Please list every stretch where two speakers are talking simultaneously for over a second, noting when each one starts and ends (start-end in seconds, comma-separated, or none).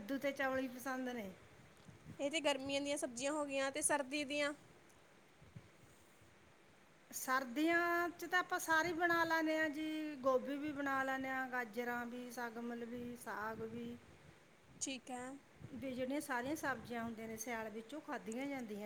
none